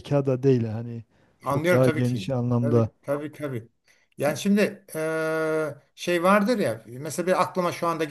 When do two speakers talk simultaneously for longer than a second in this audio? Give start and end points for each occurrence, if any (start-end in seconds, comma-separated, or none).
1.4-2.9